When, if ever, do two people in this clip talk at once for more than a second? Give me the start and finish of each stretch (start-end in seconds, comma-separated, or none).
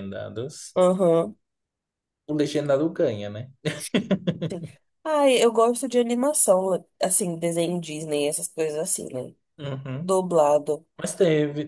none